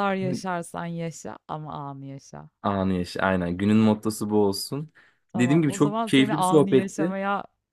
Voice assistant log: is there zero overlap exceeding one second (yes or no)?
no